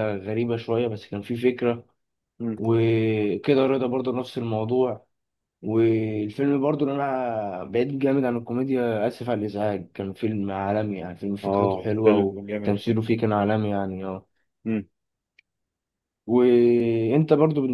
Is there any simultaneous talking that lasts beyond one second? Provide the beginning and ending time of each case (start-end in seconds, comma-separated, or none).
11.4-12.8